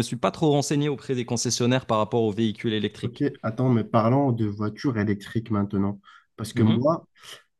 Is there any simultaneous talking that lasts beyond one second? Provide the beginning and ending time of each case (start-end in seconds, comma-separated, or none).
none